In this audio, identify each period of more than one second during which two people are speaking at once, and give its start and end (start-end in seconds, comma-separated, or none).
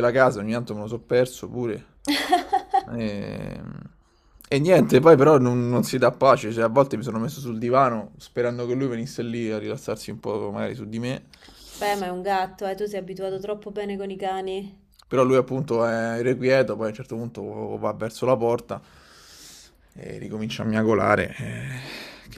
none